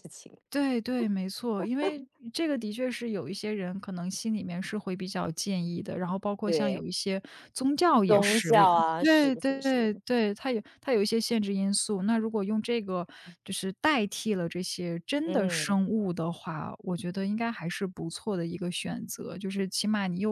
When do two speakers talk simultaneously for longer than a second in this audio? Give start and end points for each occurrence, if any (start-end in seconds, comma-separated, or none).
8.1-9.8